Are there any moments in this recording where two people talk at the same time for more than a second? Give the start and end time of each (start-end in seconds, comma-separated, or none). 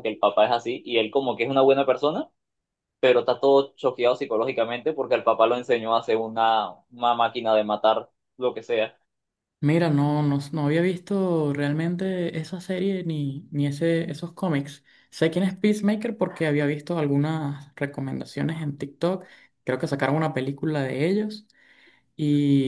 none